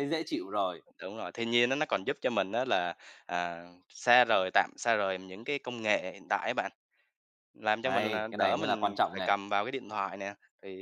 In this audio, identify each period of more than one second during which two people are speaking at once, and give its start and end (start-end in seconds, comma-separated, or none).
7.8-9.3